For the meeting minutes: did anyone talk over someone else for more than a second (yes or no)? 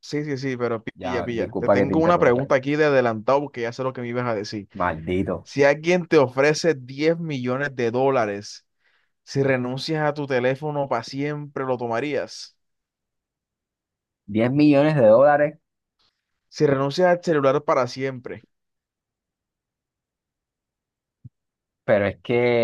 yes